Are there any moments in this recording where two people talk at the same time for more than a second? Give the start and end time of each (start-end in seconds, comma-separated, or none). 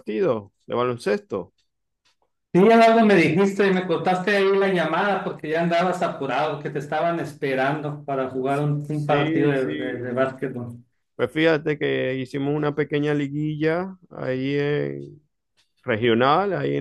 8.9-10.2